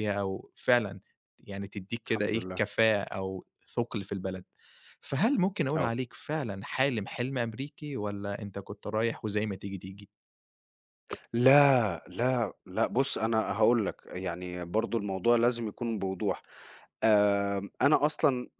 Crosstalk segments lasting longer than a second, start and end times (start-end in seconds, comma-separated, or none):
none